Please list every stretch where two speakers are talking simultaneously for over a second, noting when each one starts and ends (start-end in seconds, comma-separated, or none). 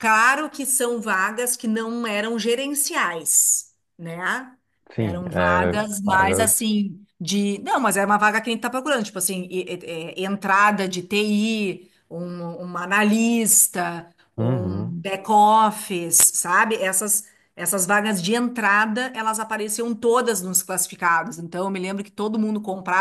5.0-6.8